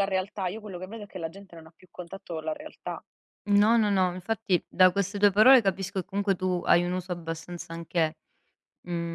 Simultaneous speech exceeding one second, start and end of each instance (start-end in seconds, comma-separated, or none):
none